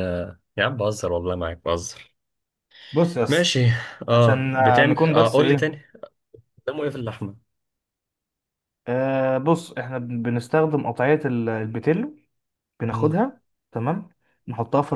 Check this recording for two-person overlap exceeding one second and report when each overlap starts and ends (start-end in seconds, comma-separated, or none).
4.1-5.7